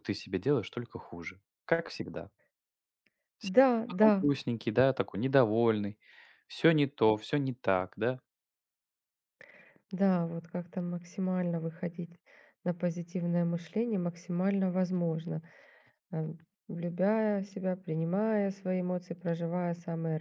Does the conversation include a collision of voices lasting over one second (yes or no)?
no